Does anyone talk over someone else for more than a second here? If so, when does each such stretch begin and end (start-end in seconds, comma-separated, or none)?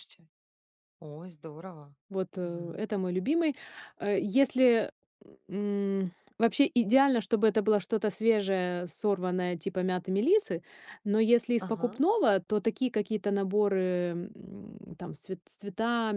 none